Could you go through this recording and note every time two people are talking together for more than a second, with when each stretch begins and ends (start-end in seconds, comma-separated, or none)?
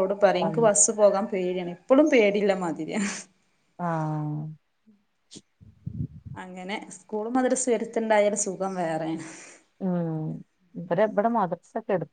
none